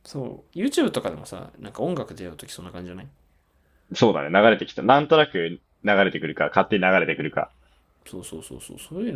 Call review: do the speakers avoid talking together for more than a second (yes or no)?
yes